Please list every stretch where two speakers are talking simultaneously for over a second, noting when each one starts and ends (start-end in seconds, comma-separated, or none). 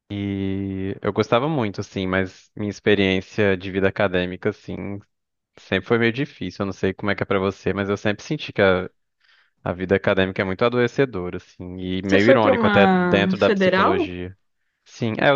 12.0-14.1